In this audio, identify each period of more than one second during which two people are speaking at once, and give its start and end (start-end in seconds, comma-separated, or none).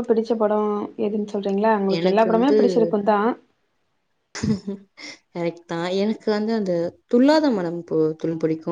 none